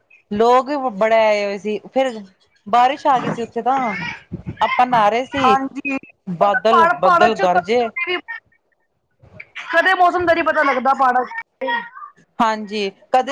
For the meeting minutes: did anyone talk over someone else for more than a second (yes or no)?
yes